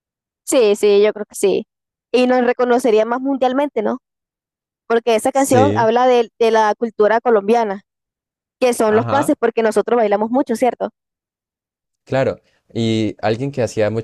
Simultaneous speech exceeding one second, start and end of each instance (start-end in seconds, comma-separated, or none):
none